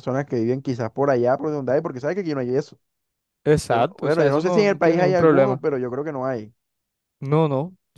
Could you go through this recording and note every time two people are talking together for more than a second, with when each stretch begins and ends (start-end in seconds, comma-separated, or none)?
3.7-5.6